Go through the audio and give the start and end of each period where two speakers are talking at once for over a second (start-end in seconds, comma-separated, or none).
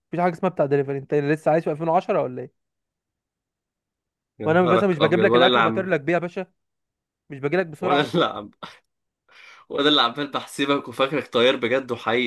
4.5-5.9